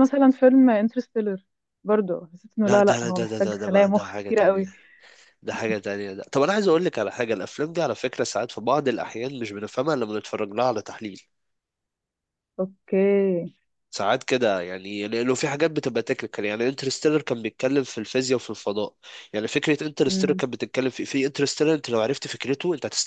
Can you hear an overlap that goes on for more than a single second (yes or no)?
yes